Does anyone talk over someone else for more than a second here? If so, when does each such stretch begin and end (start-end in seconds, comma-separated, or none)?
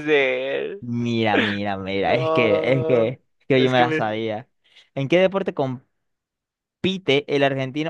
2.0-4.0